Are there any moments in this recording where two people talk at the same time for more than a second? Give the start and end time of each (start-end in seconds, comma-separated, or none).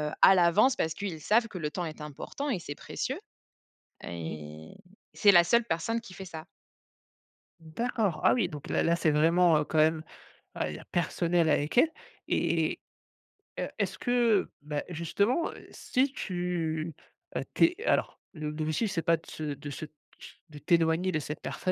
none